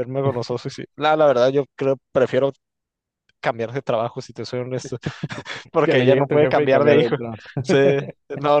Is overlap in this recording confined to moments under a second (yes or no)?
no